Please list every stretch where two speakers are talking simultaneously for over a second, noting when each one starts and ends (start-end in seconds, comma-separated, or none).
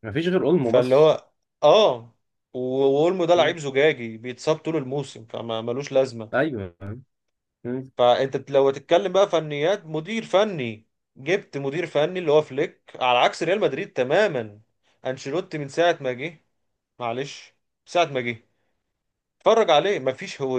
none